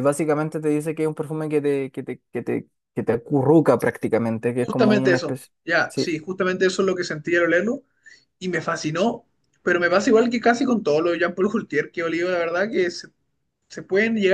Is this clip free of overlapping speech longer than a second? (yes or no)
no